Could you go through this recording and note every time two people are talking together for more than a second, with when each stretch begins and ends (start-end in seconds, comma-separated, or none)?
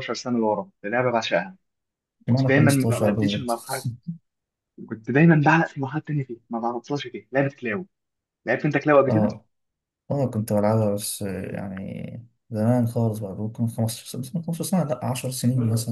2.3-3.5